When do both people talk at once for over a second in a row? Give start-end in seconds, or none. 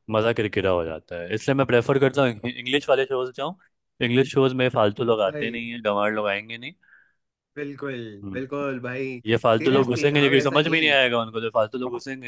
9.6-10.9